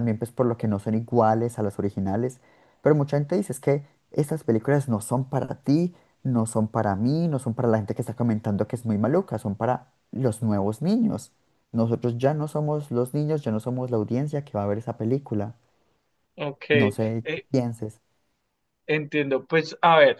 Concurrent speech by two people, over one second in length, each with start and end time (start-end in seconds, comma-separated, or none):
none